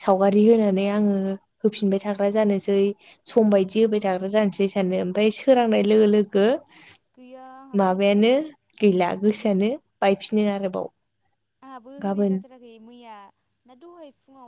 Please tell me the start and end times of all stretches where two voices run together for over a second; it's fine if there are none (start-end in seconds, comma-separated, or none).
none